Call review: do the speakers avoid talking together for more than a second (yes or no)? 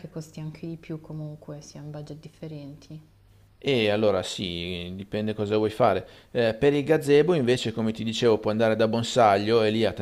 yes